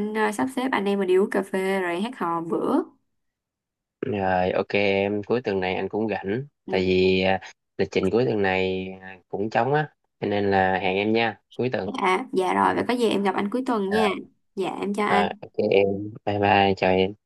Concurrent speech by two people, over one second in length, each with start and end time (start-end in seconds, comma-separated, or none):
none